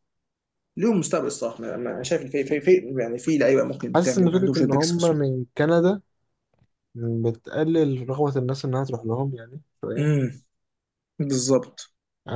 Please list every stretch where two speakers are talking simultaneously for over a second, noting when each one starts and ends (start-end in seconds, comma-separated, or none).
3.9-5.2